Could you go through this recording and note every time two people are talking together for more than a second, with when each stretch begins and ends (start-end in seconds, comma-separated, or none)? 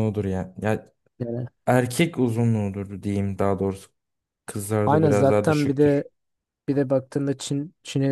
4.8-6.1